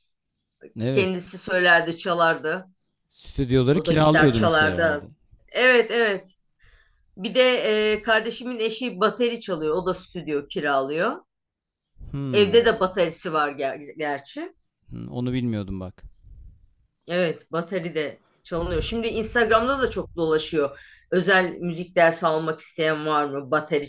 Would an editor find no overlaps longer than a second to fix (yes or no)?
no